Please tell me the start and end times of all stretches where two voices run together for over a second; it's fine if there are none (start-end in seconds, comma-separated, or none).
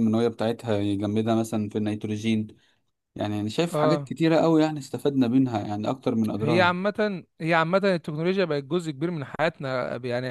none